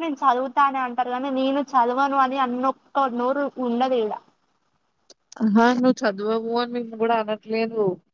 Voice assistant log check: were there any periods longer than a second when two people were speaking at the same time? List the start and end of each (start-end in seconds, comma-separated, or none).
none